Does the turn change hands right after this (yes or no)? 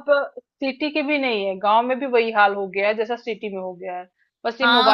yes